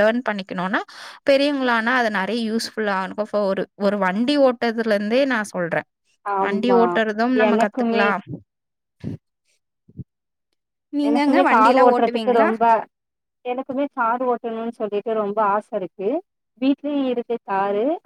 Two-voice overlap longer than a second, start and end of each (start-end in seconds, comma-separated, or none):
11.1-12.5